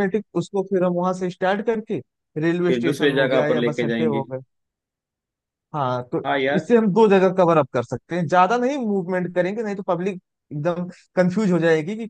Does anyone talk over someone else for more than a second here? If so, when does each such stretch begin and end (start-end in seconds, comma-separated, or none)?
2.7-4.2